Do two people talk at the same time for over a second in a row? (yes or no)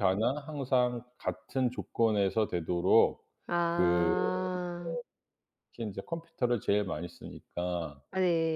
no